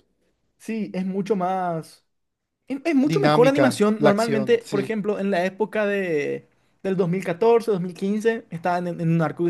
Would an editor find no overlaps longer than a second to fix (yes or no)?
no